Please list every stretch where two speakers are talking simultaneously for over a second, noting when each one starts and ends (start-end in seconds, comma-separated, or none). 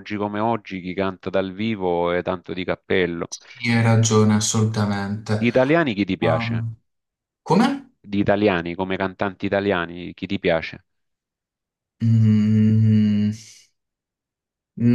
none